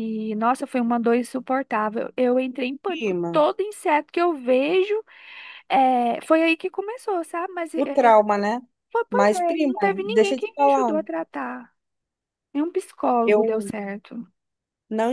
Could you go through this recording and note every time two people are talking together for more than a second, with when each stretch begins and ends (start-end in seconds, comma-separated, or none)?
9.1-11.0